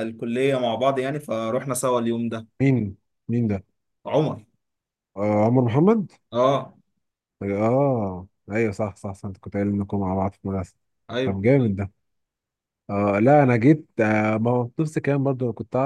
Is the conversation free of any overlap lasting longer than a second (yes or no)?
yes